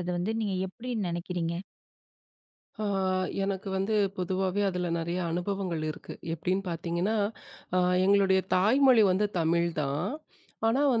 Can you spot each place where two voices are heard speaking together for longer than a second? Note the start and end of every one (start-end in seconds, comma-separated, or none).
none